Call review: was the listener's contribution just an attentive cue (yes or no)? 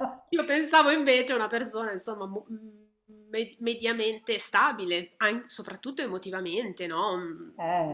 yes